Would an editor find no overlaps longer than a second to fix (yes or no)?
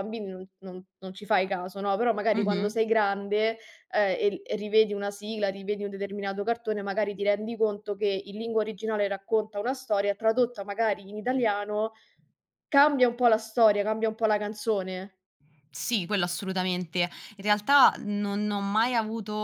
yes